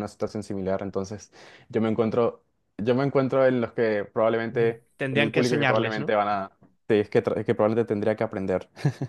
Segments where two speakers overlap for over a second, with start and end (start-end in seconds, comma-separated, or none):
4.5-6.2